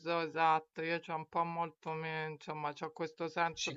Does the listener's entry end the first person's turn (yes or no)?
no